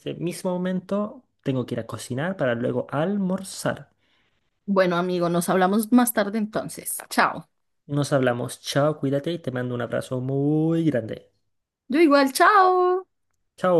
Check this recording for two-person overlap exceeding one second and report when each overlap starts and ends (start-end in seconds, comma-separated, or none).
none